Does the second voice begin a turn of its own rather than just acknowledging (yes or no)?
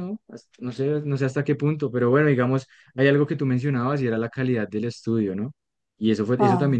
no